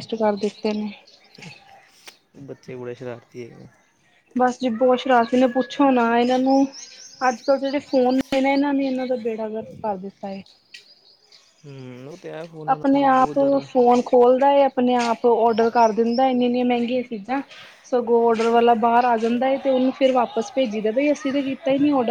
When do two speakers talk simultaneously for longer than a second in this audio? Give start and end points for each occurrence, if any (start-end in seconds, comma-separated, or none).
none